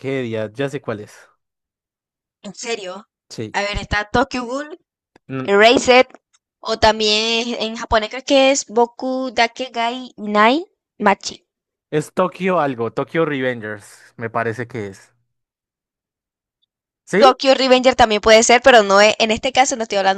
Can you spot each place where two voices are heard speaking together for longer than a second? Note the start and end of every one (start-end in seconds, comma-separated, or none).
none